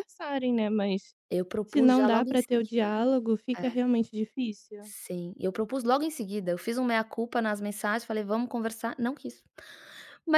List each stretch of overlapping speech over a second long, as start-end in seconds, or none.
1.6-2.9